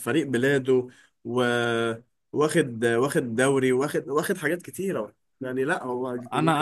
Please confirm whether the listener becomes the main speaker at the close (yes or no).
yes